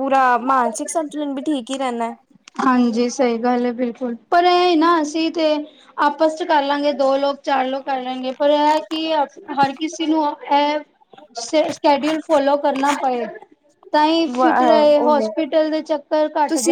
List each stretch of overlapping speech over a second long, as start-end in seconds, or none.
none